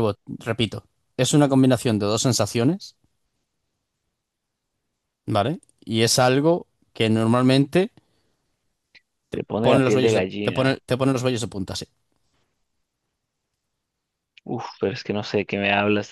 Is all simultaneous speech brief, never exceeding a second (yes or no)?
no